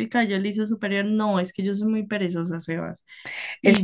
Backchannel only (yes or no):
no